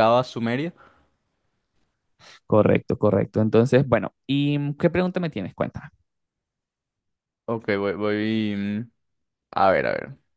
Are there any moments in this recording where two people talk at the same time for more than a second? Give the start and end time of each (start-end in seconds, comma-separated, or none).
none